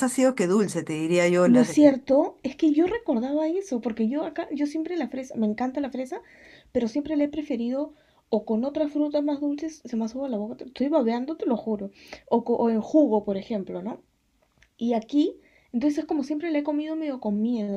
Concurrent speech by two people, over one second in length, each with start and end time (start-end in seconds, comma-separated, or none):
none